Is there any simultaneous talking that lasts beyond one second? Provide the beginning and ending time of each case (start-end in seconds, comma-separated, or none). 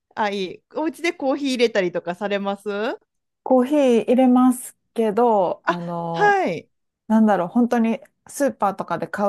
none